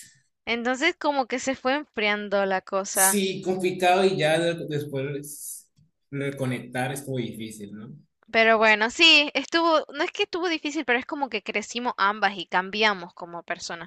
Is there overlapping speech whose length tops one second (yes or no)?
no